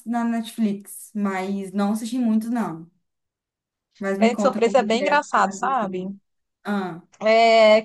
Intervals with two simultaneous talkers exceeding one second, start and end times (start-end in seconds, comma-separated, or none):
4.2-6.1